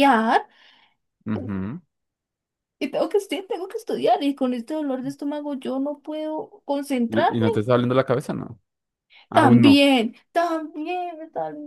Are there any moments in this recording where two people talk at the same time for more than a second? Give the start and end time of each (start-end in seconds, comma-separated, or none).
none